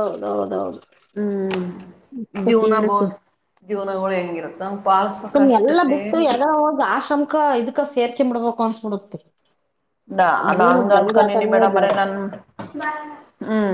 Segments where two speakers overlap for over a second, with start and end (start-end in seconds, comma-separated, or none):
none